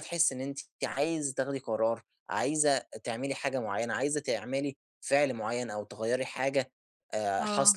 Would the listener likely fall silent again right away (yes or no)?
yes